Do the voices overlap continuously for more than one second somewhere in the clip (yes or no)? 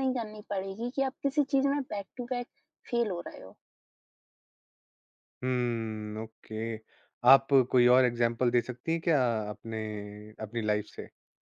no